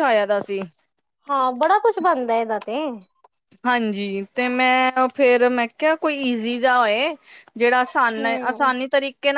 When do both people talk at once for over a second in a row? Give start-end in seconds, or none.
none